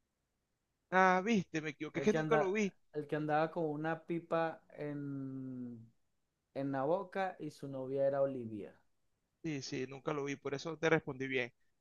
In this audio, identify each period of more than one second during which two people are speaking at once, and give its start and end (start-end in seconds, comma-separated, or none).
none